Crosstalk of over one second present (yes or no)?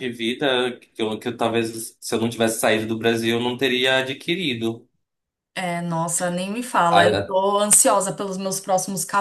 no